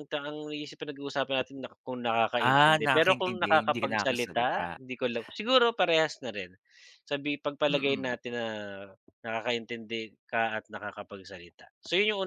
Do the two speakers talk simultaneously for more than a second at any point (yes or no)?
yes